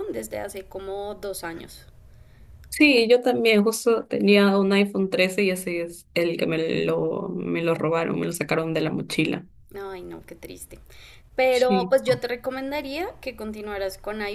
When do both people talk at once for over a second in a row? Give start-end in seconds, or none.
none